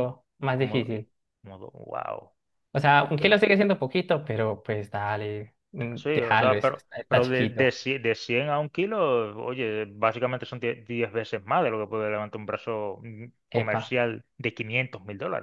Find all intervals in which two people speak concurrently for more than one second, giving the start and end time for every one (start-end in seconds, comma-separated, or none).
6.0-7.7